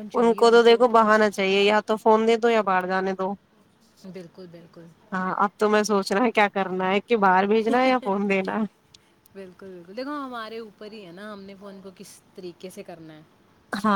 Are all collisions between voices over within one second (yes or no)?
yes